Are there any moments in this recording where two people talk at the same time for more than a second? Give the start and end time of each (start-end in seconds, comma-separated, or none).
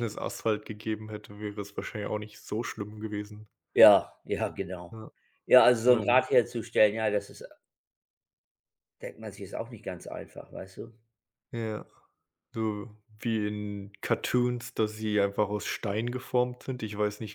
none